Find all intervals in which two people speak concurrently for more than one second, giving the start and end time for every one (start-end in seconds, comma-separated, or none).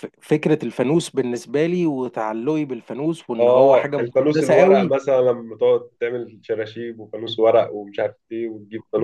3.4-5.0